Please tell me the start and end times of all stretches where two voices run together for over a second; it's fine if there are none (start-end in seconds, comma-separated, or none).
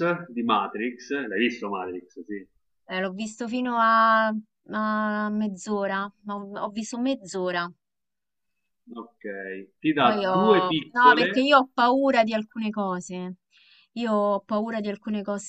10.0-11.5